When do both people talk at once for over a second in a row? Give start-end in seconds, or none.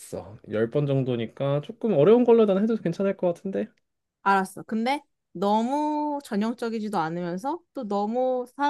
none